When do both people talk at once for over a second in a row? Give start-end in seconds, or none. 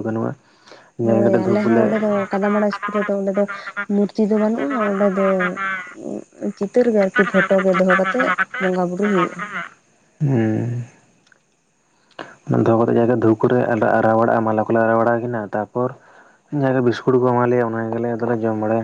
none